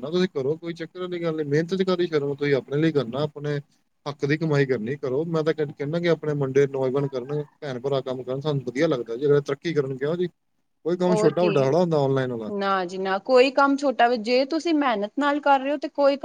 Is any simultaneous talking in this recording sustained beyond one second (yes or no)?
no